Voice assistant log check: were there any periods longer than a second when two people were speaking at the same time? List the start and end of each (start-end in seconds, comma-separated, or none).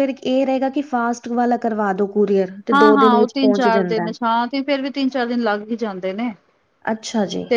none